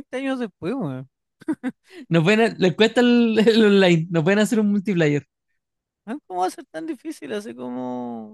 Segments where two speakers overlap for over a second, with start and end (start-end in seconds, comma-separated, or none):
none